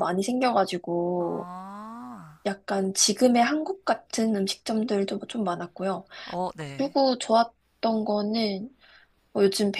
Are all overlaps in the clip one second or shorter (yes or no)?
yes